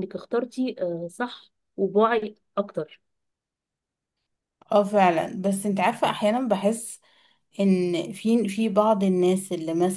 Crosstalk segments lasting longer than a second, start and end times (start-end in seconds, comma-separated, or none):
none